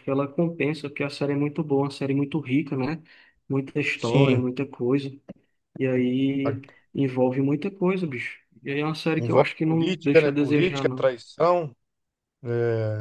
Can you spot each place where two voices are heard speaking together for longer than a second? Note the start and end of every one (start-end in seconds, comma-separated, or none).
9.2-11.1